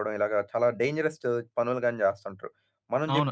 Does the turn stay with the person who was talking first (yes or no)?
no